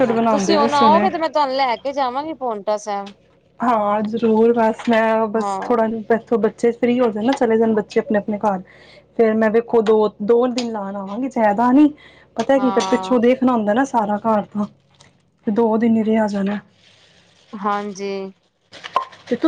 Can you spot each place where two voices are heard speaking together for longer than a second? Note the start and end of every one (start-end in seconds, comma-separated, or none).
none